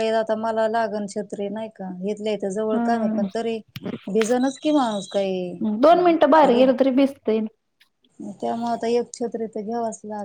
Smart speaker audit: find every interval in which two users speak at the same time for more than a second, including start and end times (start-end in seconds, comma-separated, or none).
none